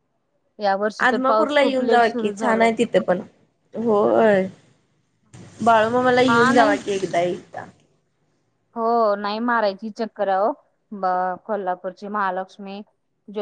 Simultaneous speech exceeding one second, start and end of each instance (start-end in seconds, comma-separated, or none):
1.1-2.7